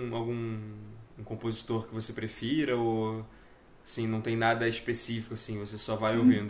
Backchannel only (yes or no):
no